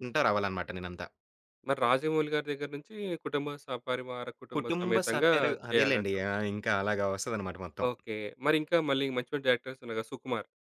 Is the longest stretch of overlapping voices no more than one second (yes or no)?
no